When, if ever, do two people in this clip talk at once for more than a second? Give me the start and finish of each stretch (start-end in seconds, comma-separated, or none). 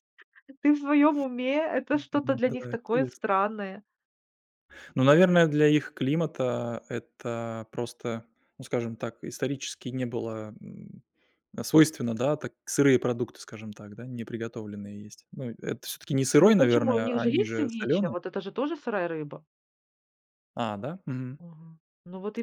1.9-3.2, 16.4-18.1